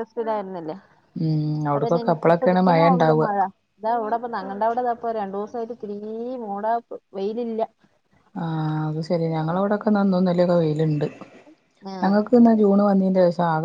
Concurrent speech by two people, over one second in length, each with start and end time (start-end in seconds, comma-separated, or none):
1.8-3.3